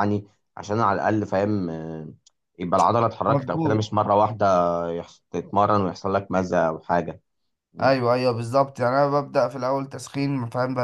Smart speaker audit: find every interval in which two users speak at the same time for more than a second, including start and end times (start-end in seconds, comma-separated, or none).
none